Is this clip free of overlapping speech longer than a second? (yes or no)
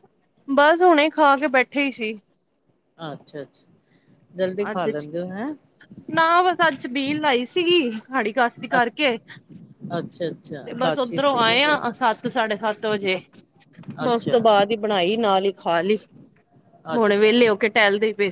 no